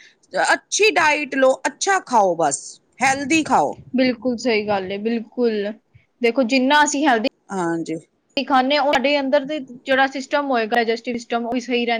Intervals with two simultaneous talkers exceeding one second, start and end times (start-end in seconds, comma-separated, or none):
none